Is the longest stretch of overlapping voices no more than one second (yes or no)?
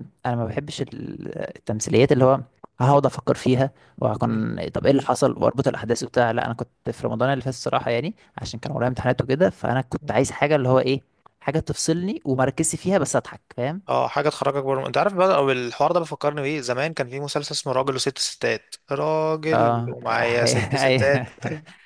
no